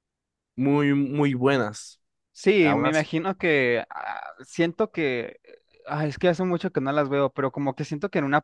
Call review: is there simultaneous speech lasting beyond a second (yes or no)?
no